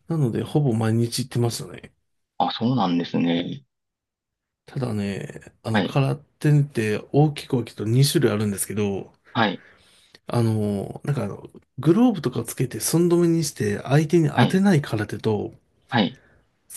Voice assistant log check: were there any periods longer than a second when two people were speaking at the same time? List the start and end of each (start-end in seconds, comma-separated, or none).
none